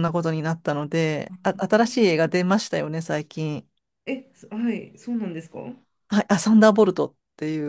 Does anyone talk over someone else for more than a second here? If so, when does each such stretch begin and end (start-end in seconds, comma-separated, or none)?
none